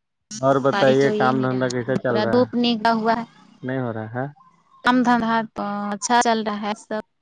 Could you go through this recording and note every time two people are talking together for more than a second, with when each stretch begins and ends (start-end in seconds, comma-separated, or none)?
0.7-2.5